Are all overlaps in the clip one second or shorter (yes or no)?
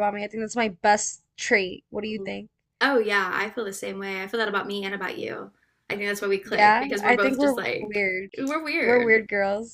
no